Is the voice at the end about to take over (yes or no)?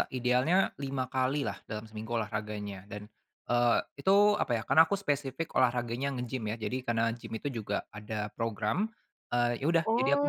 yes